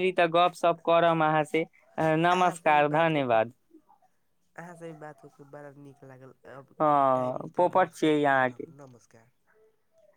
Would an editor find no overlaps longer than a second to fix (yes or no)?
no